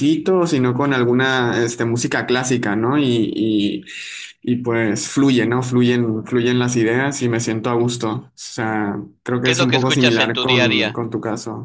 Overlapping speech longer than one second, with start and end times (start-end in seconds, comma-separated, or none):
9.4-11.0